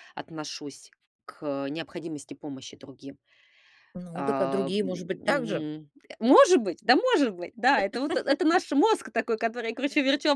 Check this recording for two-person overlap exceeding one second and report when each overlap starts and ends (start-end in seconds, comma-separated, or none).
4.2-5.7